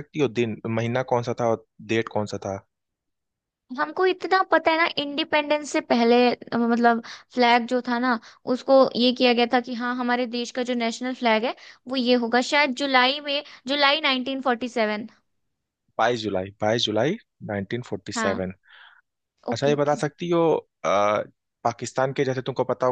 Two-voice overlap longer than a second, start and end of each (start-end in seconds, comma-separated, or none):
none